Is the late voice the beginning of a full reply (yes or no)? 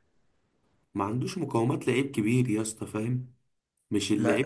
yes